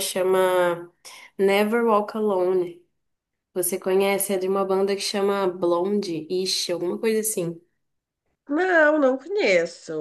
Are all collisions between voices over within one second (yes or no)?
yes